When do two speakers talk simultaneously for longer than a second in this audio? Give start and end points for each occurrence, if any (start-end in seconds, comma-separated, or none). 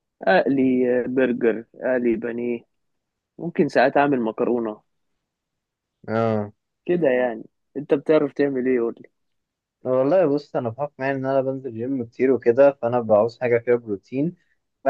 none